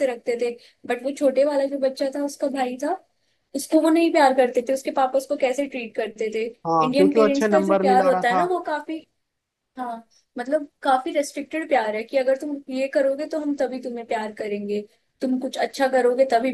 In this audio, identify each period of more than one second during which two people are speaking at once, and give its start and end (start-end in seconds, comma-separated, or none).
6.8-8.4